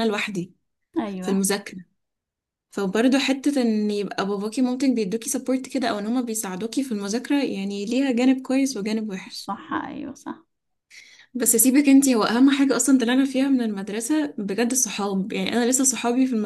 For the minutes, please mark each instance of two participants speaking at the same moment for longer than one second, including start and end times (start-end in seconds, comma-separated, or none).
none